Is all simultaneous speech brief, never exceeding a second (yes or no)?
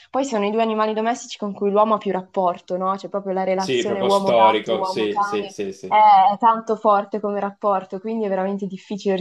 no